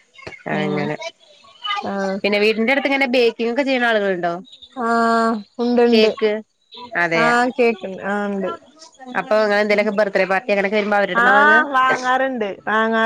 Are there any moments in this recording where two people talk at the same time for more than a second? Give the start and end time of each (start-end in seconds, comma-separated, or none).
none